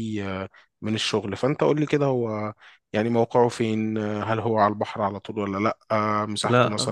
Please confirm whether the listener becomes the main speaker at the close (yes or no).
no